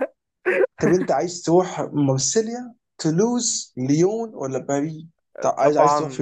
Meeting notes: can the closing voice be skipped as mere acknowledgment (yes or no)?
no